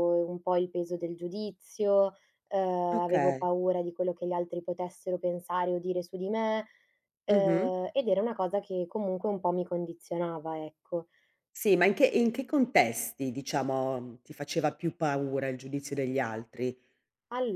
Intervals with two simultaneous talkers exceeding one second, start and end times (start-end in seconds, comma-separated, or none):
none